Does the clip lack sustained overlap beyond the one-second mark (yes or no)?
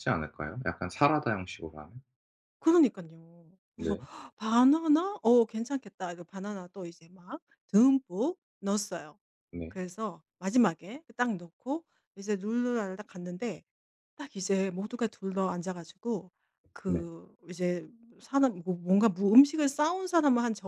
yes